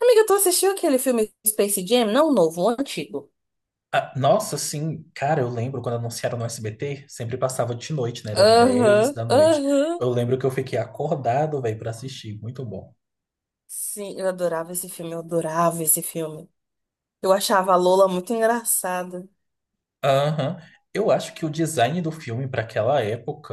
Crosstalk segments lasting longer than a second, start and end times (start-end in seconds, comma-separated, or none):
8.5-10.1